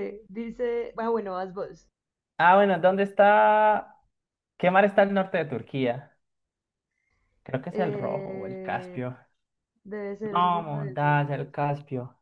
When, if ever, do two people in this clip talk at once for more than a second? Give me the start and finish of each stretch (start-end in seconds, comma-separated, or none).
7.7-9.0, 10.2-11.5